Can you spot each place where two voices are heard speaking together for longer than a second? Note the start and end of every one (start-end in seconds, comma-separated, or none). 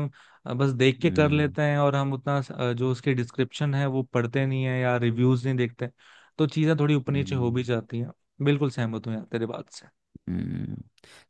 none